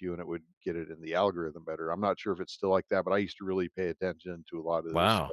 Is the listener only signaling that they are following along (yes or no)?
no